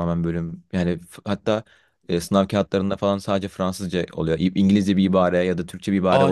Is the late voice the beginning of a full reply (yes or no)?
yes